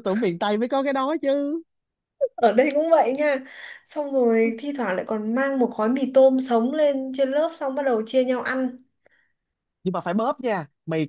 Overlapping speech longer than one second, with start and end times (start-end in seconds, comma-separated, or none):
none